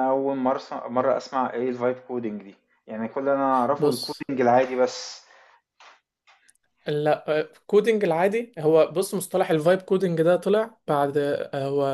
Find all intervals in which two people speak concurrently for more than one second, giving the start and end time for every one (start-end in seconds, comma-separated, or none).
none